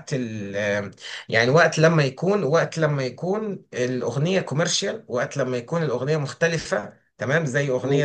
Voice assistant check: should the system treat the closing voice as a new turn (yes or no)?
no